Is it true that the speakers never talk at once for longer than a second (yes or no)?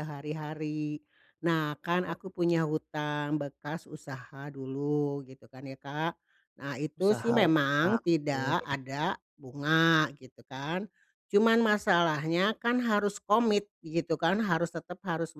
no